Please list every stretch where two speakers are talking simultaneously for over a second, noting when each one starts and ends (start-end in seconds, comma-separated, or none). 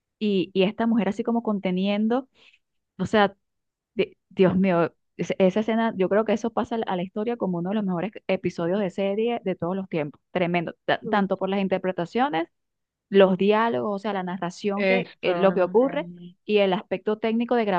14.8-16.1